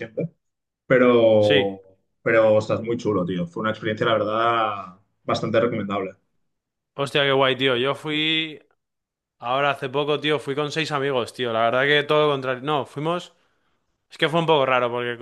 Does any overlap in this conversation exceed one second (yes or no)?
no